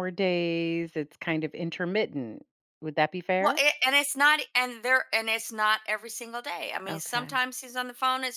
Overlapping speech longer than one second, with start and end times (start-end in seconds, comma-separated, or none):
none